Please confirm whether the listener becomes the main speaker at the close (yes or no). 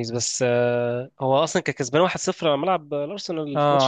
yes